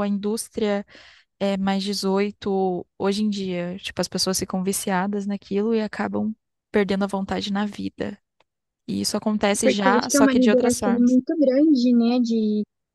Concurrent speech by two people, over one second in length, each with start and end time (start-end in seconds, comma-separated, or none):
9.6-11.2